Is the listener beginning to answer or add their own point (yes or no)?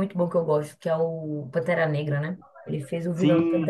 no